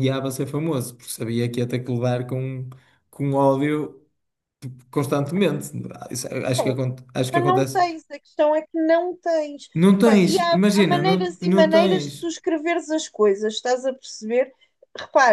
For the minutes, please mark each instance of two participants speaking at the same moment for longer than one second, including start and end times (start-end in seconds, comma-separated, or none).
9.7-12.3